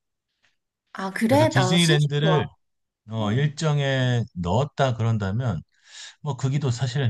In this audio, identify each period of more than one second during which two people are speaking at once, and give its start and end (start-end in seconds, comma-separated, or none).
1.2-2.5